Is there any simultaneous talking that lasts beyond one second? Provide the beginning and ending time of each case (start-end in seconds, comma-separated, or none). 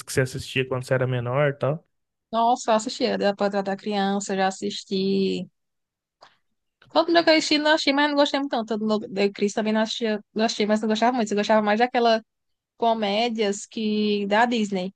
none